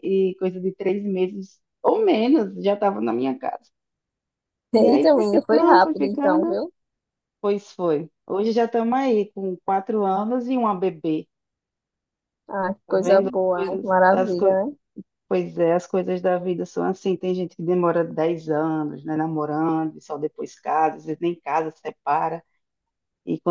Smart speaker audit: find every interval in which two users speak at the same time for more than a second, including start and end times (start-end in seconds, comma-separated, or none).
4.8-6.6, 12.9-14.6